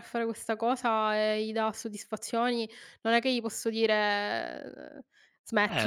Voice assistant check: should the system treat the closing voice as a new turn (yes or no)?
yes